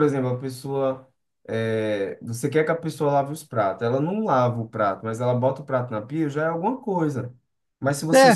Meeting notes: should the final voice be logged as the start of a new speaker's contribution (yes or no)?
no